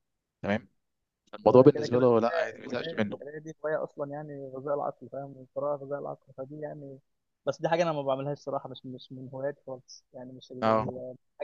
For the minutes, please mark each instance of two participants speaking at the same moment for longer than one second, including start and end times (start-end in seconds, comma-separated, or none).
1.4-3.2